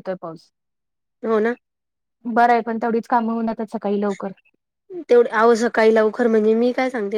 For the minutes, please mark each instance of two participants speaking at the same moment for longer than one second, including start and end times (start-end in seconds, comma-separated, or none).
none